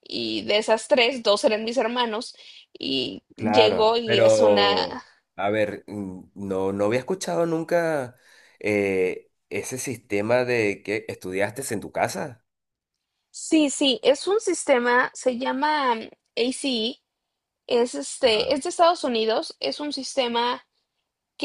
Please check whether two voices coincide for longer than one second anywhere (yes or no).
yes